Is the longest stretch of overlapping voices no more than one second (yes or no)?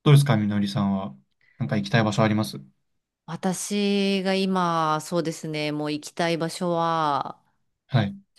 yes